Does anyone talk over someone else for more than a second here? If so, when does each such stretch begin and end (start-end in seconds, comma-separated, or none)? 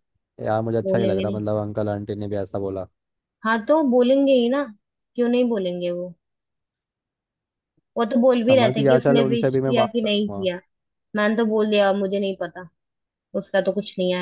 8.4-10.5